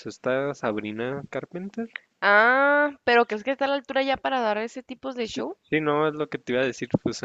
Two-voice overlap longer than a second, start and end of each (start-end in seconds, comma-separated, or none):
none